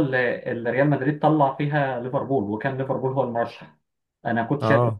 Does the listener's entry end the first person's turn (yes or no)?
no